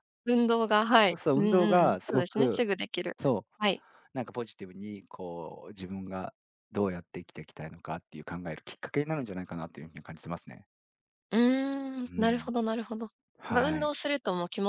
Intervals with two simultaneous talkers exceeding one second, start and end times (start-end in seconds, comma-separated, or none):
1.1-2.6